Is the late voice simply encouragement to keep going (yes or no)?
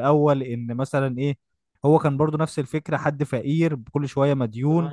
yes